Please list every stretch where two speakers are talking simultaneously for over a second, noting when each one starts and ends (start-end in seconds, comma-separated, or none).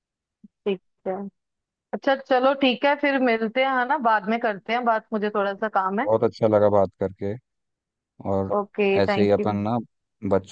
none